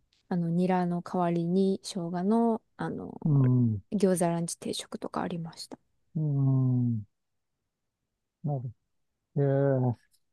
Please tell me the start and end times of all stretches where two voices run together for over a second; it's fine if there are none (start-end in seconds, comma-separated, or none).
none